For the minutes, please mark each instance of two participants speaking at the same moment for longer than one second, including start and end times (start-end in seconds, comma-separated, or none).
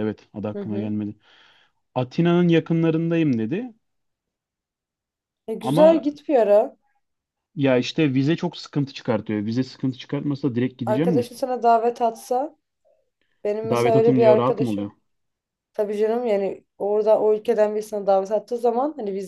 13.7-14.9